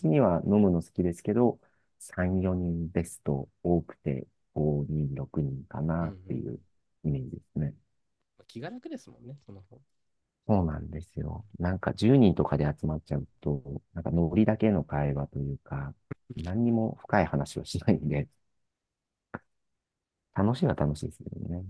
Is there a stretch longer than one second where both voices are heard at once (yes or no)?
no